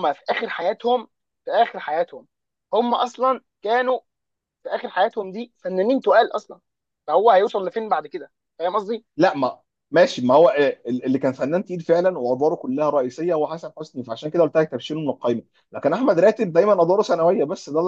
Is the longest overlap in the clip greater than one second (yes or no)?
no